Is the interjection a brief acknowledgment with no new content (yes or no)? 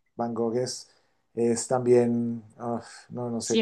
no